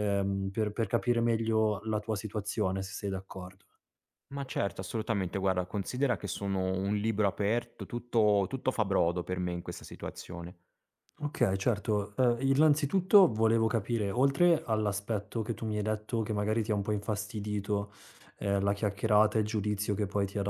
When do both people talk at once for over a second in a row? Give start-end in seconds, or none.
none